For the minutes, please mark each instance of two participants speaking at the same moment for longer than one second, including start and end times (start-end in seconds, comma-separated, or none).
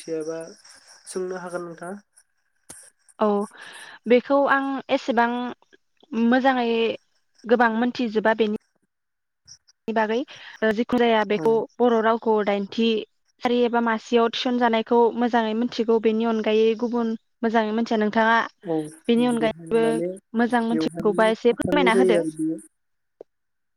20.7-22.2